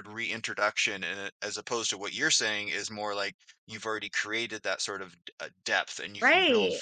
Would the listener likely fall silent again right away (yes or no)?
no